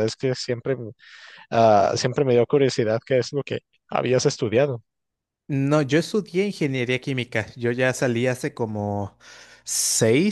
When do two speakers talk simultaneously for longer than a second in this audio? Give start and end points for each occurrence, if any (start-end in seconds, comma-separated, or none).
none